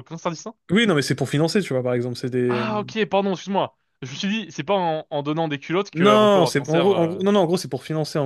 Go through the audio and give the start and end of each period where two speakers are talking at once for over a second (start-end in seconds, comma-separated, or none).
5.9-7.2